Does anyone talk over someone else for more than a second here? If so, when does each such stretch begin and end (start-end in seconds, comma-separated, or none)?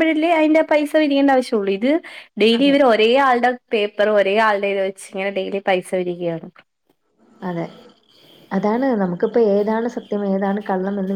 none